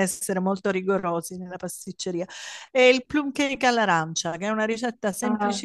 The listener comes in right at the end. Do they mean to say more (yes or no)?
no